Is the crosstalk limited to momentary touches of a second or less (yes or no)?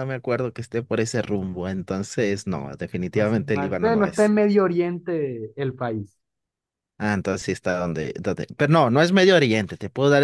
no